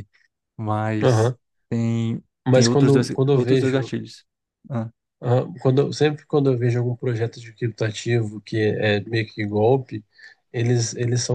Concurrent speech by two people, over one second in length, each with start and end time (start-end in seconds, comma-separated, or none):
2.5-3.9